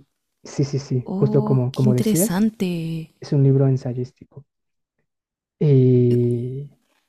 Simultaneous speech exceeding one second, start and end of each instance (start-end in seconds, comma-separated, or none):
1.0-2.5